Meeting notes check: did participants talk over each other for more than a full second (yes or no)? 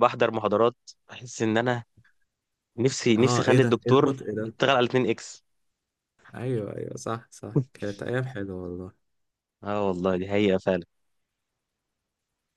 yes